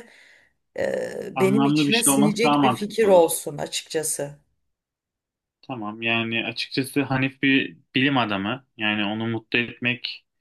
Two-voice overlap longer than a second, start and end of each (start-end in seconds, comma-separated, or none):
1.4-3.2